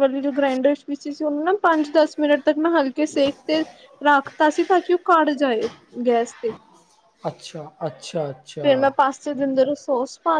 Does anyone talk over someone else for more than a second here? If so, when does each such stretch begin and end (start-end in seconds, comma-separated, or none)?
none